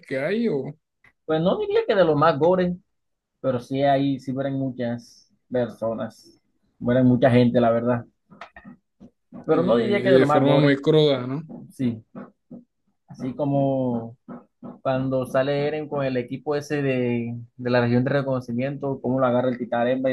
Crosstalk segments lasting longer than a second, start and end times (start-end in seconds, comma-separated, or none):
9.5-10.8